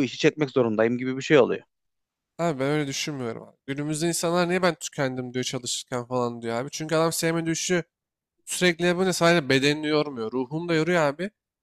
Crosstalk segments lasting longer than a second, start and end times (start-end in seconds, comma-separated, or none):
none